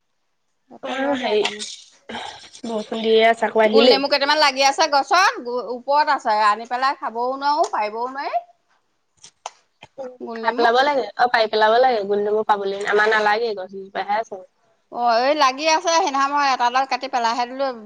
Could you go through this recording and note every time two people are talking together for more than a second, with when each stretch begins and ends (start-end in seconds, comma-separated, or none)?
none